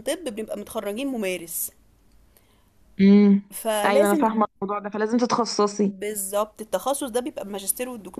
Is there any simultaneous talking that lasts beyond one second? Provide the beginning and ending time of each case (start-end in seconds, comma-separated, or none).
none